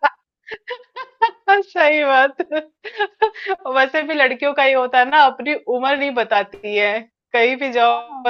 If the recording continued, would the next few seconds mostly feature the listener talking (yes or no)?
no